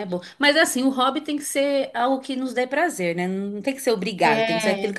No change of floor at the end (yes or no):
yes